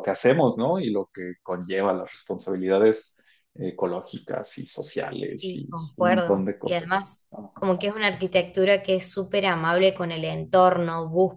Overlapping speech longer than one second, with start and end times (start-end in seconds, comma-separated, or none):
5.2-7.5